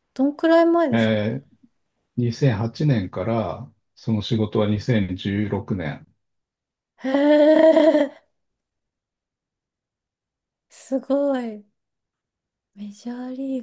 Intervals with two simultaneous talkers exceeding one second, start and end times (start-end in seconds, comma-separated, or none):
none